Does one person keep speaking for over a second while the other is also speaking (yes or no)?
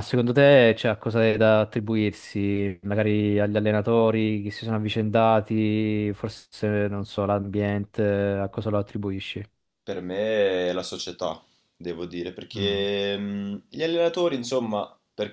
no